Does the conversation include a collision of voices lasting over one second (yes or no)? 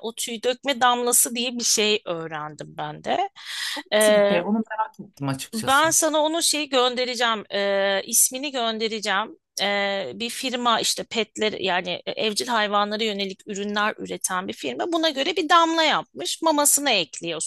no